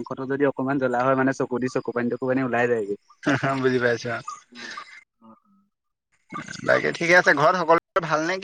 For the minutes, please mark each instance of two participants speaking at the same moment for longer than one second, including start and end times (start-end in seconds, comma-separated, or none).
none